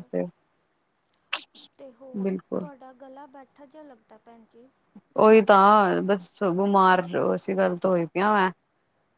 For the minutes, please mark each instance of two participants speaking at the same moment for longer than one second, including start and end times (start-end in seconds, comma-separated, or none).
none